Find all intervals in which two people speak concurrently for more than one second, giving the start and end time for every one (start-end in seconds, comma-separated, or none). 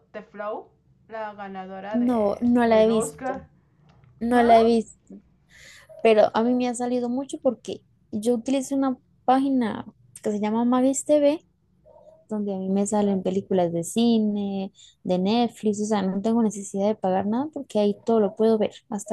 1.9-3.5